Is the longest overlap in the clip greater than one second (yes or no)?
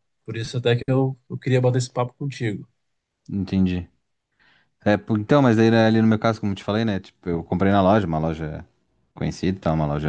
no